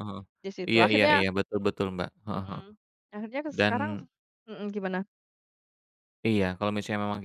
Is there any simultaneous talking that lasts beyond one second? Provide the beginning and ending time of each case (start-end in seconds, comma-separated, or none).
none